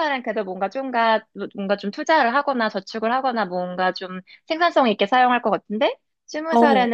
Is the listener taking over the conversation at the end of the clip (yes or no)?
no